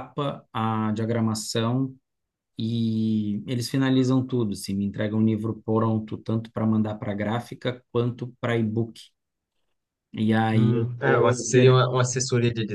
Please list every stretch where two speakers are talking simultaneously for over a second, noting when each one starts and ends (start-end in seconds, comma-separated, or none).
10.5-11.8